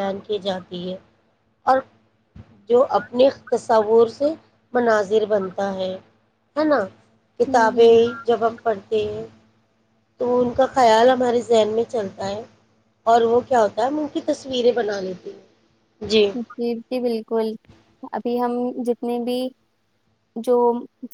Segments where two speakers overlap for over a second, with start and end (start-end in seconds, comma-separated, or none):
none